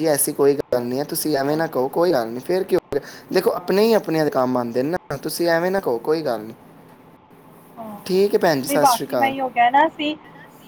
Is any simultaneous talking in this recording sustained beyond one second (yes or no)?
no